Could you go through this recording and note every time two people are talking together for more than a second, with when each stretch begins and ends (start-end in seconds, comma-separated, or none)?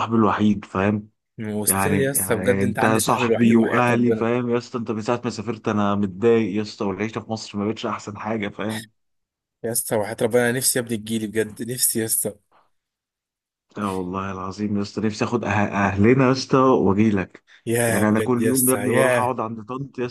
1.7-4.3, 17.9-19.3